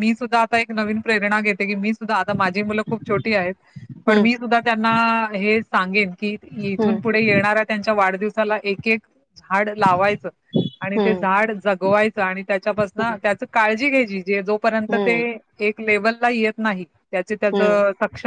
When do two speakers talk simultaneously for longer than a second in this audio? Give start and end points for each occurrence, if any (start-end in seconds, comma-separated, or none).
none